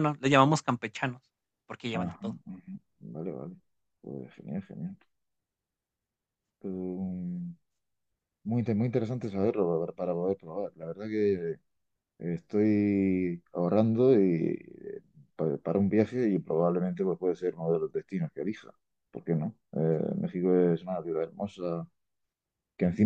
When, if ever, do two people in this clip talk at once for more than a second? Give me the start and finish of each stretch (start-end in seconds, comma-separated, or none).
none